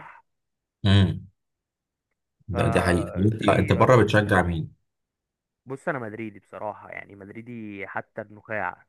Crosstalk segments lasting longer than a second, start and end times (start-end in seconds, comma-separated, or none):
2.5-4.1